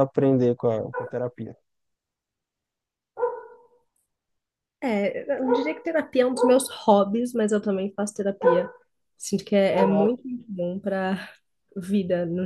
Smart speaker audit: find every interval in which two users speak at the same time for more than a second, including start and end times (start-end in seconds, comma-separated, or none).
none